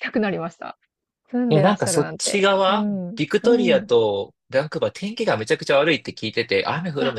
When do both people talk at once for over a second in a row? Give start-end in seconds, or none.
1.5-3.9